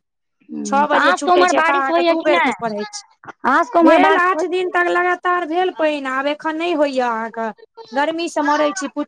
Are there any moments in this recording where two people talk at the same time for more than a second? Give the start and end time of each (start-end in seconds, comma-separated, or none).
0.9-2.5